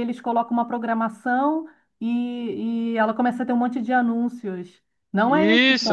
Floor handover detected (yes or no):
yes